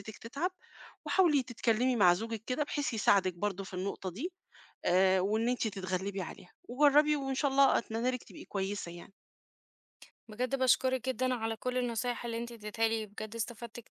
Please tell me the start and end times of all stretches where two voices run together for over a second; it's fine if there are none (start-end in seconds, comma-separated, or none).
none